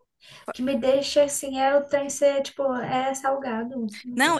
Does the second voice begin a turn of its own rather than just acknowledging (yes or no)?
yes